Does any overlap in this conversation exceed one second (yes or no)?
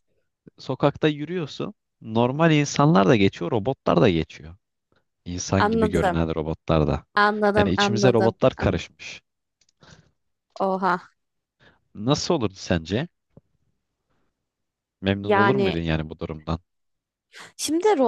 yes